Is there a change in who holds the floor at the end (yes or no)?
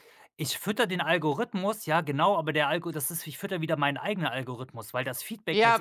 yes